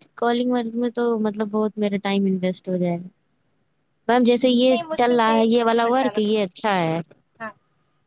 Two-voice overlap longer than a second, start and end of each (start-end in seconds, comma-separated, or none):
4.7-6.4